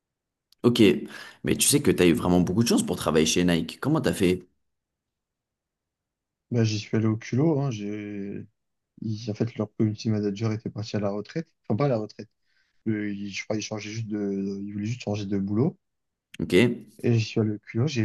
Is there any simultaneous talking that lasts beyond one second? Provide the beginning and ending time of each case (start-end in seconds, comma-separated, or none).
none